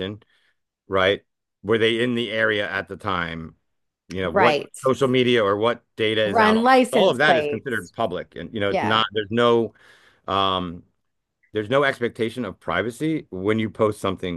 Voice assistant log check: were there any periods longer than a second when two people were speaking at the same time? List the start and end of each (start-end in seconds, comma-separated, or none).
6.2-7.9